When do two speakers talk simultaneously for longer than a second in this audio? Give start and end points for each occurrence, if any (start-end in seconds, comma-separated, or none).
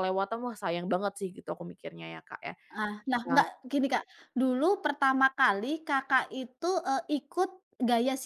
none